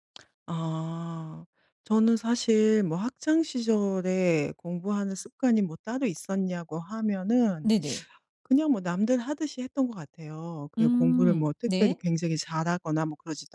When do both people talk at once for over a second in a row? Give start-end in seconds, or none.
10.8-12.0